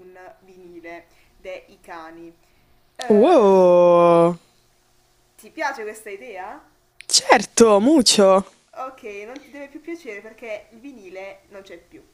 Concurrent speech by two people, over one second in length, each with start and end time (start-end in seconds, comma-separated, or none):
none